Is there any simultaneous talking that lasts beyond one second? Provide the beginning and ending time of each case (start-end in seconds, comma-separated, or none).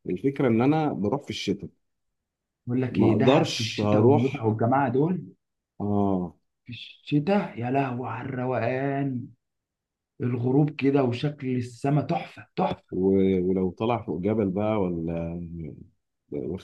2.9-4.5